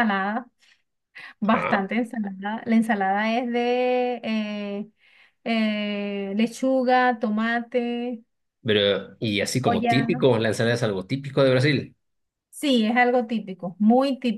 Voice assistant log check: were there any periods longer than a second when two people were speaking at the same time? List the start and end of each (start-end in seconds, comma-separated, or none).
none